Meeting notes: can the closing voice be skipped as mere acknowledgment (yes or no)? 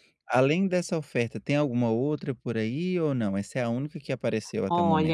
no